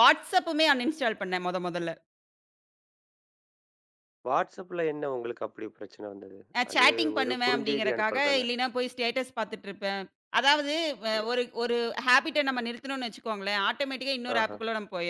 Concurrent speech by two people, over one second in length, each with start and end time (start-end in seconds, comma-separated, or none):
6.6-8.4